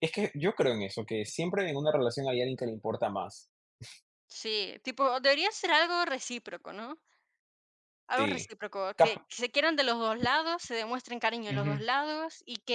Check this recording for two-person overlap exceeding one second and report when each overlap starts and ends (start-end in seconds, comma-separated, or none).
none